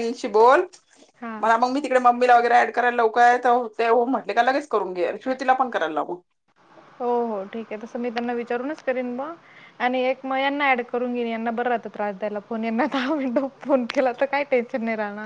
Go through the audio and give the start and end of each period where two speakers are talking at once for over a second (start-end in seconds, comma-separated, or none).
none